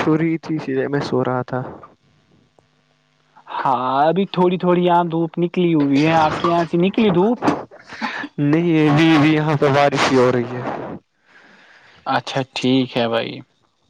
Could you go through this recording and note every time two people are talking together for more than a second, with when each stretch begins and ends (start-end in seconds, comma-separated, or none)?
none